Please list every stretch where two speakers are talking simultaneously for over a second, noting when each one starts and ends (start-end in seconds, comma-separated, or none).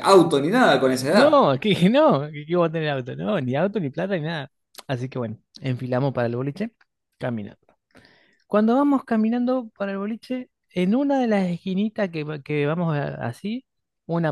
none